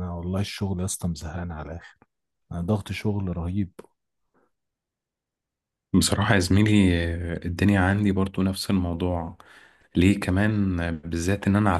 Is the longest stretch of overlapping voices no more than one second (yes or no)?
yes